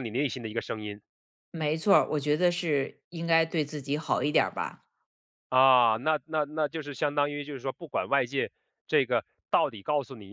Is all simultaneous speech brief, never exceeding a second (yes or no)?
yes